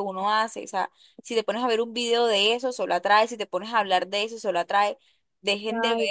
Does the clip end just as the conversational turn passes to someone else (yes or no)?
no